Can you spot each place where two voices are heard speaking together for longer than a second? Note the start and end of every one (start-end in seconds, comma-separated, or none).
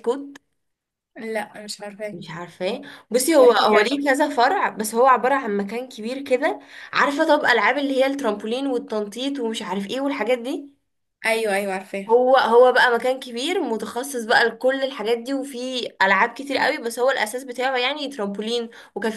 none